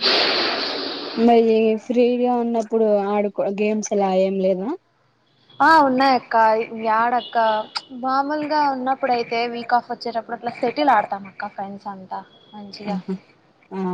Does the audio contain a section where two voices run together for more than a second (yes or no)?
no